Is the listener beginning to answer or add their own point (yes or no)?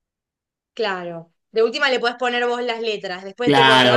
yes